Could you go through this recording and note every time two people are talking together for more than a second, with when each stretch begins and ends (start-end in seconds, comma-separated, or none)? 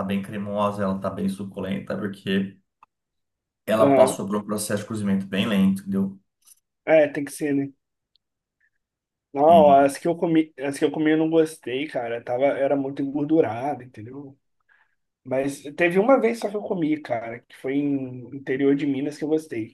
none